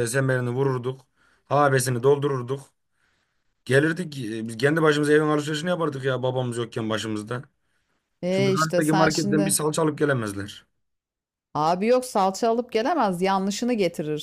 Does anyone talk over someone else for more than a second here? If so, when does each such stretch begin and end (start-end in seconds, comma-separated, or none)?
8.3-9.6